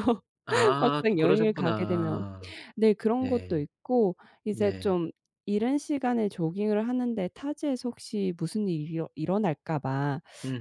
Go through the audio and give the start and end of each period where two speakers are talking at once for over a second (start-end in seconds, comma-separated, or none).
0.8-2.2